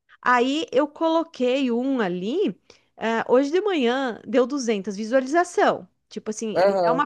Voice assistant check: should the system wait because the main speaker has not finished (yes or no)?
yes